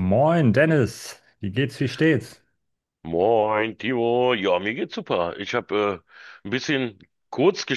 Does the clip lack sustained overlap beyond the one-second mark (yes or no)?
yes